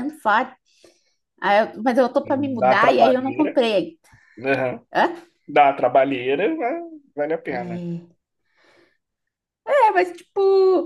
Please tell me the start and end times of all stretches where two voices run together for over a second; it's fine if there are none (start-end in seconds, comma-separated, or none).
2.2-3.6